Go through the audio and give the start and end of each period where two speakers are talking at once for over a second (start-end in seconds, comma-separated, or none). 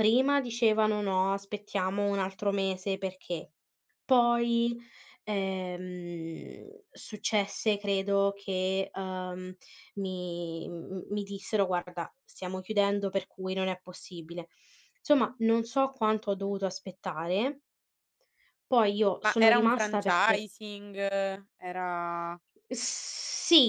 19.2-20.5